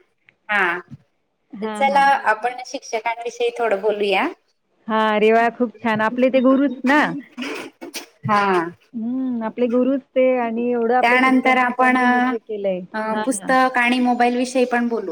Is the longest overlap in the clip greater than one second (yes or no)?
yes